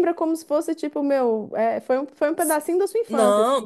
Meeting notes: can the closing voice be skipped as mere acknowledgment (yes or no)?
no